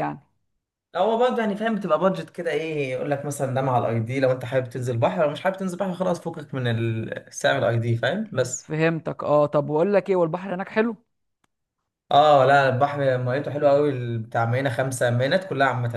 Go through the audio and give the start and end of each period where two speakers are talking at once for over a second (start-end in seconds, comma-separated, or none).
none